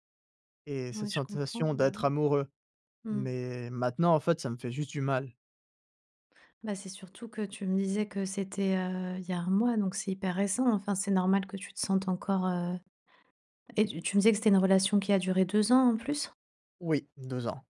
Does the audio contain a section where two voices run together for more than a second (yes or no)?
yes